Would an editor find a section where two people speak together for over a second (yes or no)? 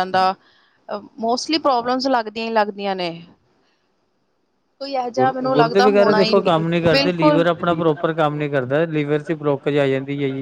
yes